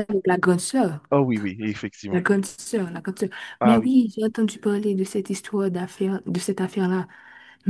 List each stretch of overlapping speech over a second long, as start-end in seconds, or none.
none